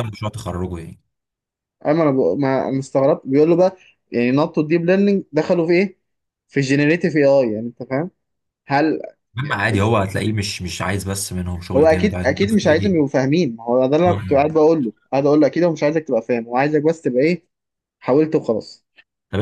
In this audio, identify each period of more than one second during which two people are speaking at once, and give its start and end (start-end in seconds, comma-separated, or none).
11.8-13.0